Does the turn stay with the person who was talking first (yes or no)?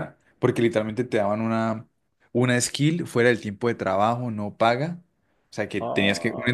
yes